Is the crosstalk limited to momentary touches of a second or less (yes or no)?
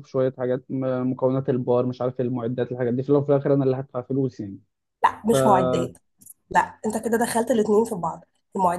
yes